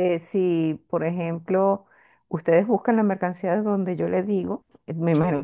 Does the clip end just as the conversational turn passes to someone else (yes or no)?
no